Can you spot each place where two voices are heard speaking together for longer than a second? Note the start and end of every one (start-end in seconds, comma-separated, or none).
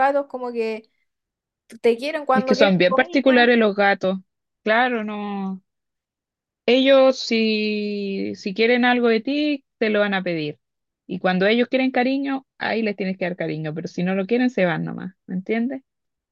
2.3-3.5